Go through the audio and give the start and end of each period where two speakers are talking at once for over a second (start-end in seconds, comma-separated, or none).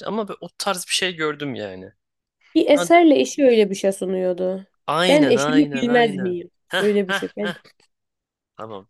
5.1-7.5